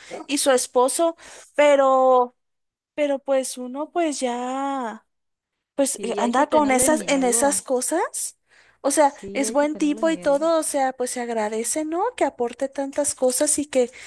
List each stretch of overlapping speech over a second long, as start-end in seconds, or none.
5.9-7.7, 9.0-10.5